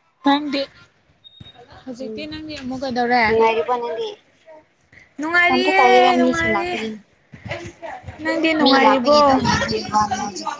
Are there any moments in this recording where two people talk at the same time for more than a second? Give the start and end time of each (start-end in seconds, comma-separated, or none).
5.5-6.8